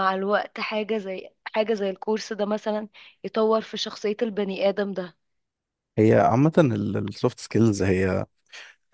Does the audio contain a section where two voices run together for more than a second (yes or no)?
no